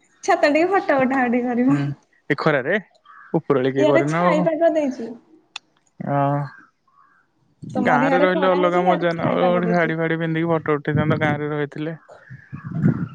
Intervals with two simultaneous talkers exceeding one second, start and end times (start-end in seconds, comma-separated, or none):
7.8-9.9